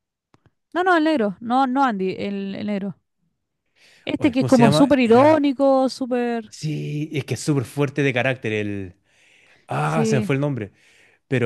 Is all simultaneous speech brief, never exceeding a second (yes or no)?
no